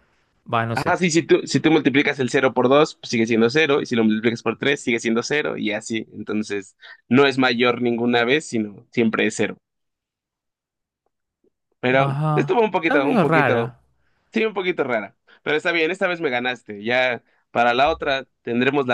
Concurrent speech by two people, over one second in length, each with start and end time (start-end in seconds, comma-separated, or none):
12.0-13.8